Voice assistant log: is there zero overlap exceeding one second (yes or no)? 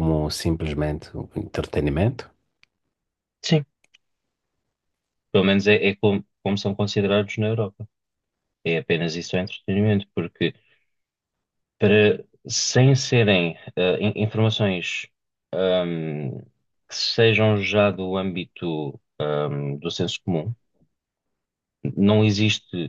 yes